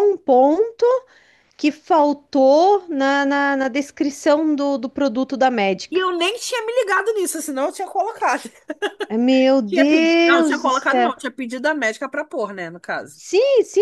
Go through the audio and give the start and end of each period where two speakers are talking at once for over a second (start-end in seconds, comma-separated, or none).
9.7-11.1